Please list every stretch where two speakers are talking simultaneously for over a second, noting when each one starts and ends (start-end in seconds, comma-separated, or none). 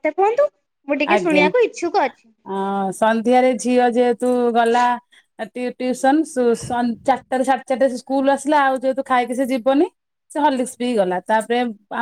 none